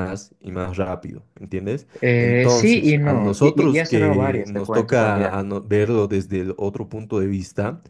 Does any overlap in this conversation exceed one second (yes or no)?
yes